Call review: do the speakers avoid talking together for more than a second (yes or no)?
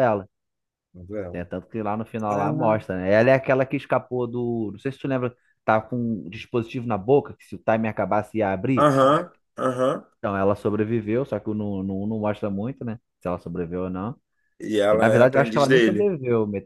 no